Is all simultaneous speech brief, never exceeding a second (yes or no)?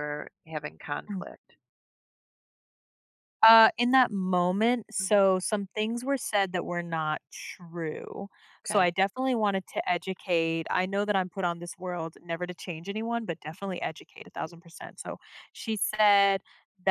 yes